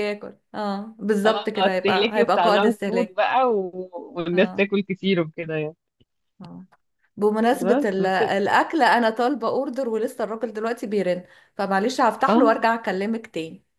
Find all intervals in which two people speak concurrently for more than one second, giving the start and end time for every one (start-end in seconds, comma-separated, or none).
1.2-3.2